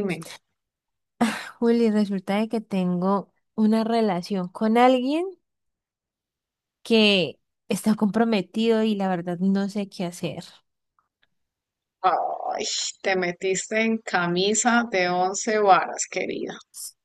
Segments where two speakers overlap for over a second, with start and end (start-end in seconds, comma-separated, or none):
none